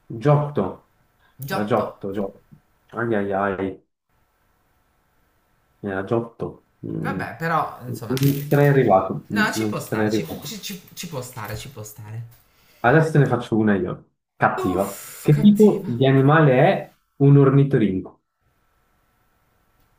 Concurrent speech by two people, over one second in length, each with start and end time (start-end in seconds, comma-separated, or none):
9.3-10.6, 14.6-15.9